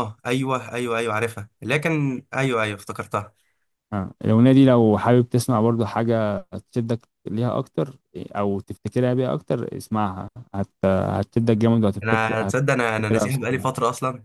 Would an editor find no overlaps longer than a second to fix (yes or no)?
no